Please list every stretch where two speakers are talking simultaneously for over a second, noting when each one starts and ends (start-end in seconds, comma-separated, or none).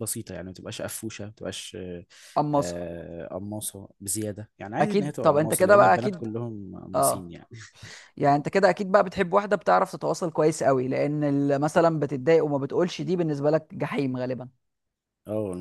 4.8-6.3